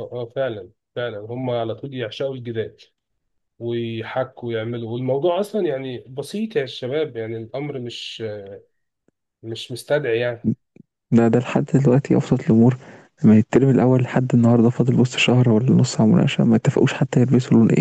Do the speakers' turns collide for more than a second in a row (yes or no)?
no